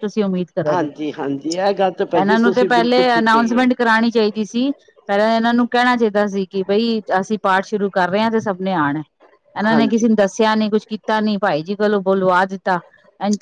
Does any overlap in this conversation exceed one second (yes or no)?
yes